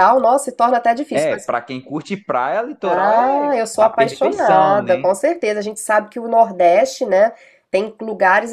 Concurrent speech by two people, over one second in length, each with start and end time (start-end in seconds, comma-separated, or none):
2.8-5.0